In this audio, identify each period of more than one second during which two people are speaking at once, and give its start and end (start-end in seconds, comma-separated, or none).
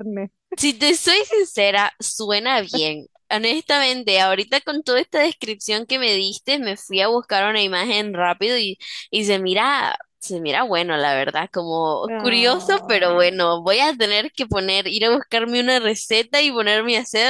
12.1-13.4